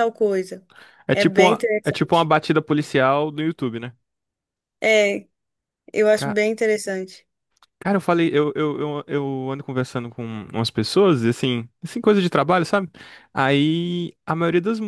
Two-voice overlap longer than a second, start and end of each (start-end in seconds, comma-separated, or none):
1.1-2.3